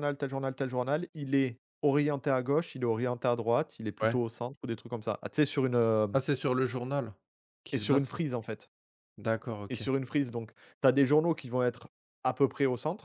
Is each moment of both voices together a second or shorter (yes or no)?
yes